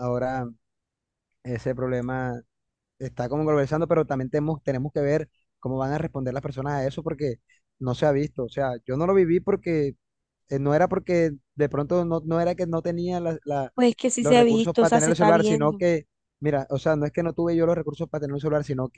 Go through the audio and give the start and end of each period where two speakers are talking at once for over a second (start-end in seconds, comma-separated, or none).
14.2-15.8